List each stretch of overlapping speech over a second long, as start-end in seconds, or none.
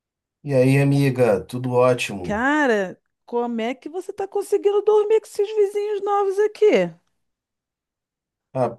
none